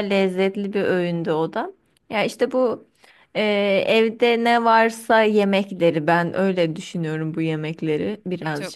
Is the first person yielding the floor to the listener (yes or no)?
yes